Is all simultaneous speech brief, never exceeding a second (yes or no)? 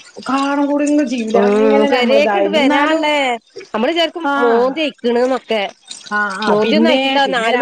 no